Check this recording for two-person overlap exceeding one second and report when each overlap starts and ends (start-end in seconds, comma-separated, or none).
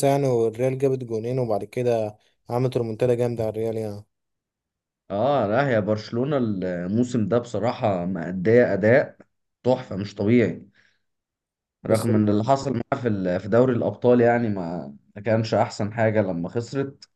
none